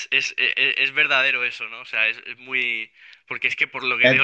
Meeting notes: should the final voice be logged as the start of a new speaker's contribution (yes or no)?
no